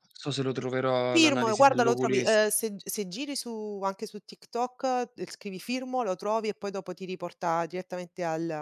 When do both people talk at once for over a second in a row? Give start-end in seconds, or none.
1.1-2.5